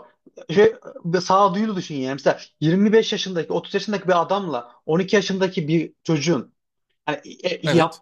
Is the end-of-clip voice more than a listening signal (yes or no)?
no